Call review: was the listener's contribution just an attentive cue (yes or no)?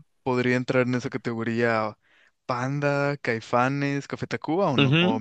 no